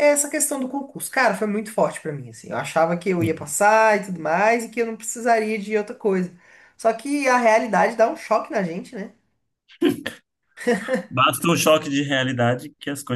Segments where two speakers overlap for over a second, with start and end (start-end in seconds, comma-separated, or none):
none